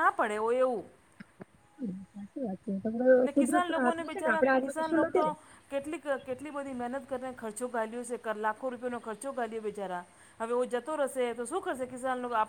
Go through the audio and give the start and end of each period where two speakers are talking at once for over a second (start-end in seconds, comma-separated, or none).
3.3-5.2